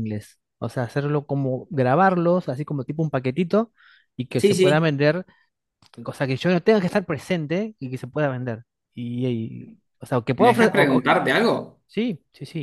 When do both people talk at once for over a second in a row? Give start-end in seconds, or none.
none